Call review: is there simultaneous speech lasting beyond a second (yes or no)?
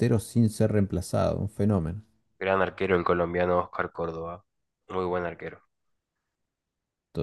no